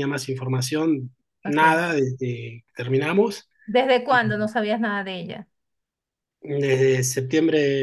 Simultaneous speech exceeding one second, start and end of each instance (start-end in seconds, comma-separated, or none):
none